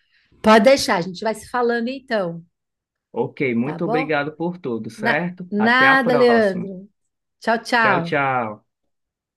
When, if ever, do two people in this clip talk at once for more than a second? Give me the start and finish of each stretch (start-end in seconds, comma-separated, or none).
5.0-6.7